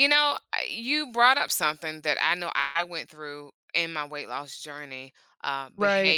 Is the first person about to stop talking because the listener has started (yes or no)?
no